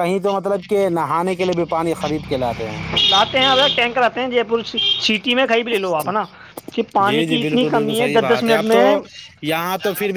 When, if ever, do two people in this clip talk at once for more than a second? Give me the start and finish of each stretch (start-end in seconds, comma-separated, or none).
7.1-8.8